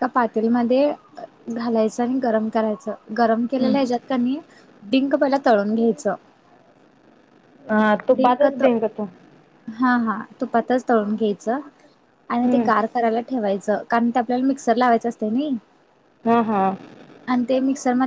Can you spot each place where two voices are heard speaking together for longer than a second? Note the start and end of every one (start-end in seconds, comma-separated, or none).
none